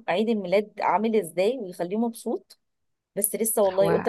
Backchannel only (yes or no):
no